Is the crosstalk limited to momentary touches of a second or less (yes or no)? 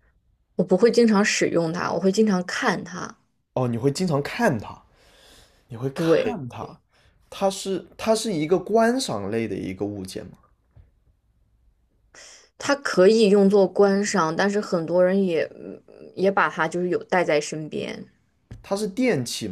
yes